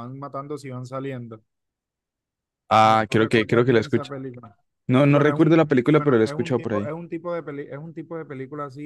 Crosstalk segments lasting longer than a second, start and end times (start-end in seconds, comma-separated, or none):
2.8-4.1, 5.1-6.9